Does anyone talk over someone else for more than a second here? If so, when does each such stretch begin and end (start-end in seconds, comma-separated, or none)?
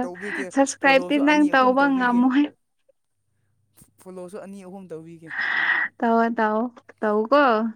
0.5-2.2